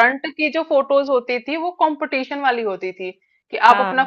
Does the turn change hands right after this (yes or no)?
no